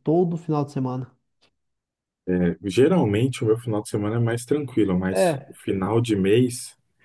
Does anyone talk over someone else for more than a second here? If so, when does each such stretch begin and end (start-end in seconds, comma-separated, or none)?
none